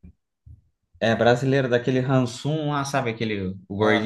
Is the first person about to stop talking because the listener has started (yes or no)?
yes